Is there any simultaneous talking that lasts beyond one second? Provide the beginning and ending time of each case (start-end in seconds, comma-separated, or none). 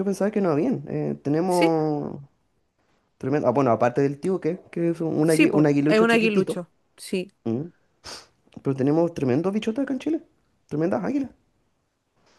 5.2-6.6